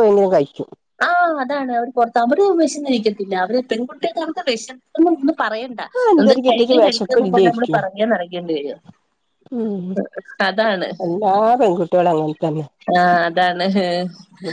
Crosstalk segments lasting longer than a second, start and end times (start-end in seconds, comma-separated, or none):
6.0-7.8